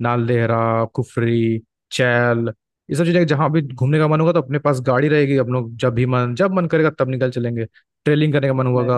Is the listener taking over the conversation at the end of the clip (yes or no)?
no